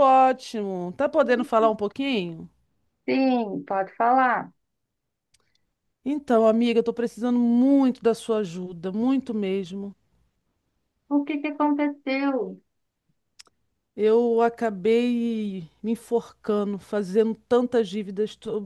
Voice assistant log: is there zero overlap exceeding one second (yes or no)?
yes